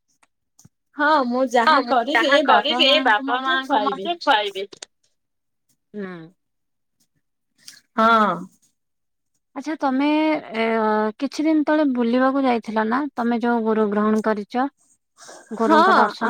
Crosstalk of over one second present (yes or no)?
yes